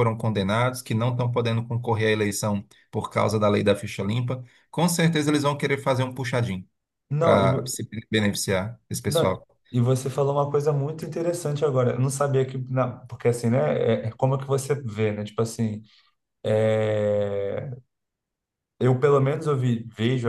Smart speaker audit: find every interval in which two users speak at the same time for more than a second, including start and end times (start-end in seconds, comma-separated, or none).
none